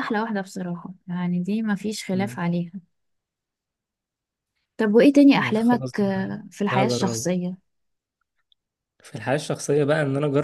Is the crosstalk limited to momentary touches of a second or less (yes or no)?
no